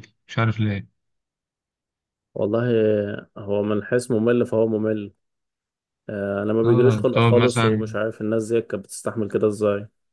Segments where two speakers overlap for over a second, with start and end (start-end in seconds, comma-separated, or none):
6.6-7.9